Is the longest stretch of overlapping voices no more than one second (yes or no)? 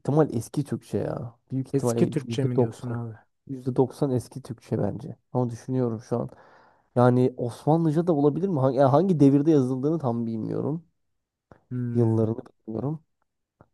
no